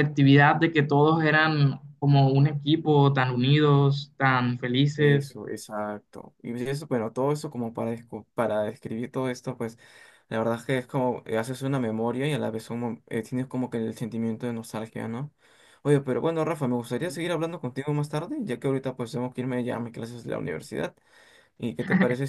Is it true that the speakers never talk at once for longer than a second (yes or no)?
yes